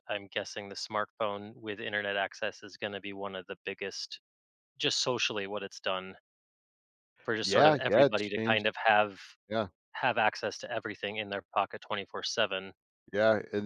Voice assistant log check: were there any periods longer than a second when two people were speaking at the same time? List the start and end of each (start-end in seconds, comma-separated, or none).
7.4-8.7